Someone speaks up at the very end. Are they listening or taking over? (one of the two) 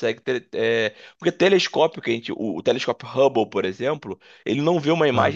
listening